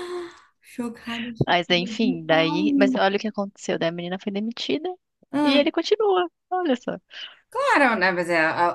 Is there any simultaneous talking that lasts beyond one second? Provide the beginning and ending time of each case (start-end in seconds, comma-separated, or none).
1.5-3.0